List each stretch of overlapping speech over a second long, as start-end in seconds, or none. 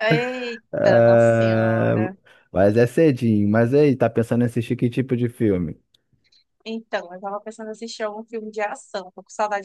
0.7-2.0